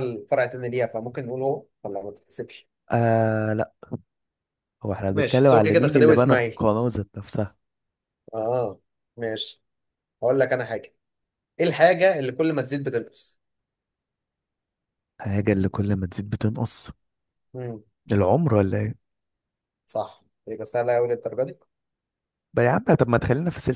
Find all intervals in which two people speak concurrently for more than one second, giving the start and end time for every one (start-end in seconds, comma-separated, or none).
5.1-6.6